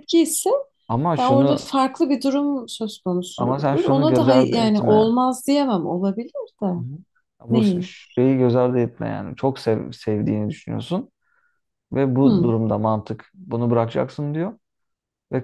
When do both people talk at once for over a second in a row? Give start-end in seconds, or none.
3.4-5.1